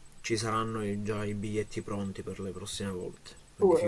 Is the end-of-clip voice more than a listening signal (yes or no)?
yes